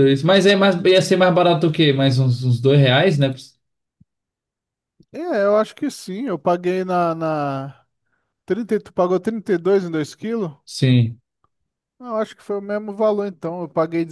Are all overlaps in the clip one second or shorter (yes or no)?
yes